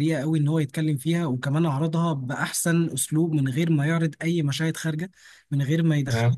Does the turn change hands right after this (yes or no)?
no